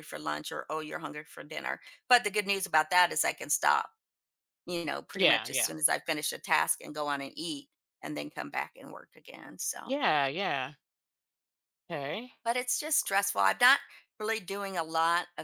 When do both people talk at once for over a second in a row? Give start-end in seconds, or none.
none